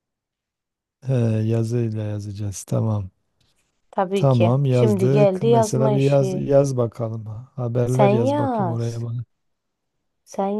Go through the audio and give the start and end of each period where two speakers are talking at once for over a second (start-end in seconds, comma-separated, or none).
4.1-6.5, 7.8-9.0